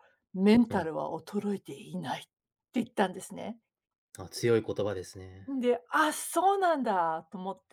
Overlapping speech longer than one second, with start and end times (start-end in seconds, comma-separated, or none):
none